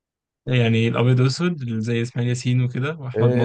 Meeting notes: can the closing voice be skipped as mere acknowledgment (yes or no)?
no